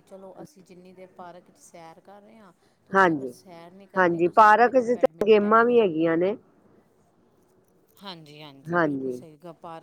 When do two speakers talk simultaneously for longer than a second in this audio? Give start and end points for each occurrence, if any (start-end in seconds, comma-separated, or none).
4.0-6.2